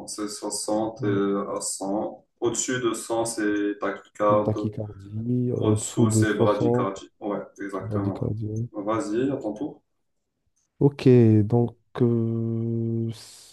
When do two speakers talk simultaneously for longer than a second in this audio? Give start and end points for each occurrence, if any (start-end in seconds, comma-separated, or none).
5.6-6.9